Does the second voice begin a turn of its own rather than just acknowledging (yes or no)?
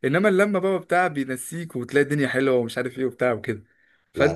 no